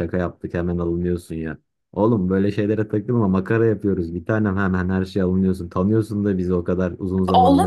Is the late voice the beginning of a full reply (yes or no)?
yes